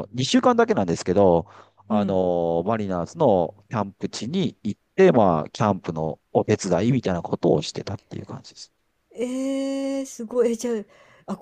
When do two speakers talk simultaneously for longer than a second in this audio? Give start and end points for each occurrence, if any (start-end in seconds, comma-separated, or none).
none